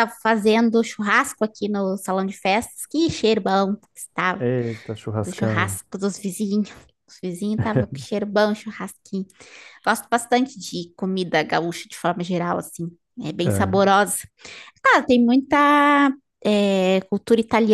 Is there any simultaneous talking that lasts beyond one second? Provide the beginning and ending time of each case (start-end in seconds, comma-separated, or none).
none